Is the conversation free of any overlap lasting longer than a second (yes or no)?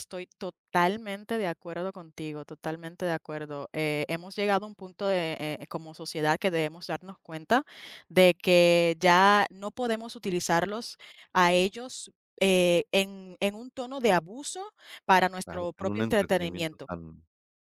no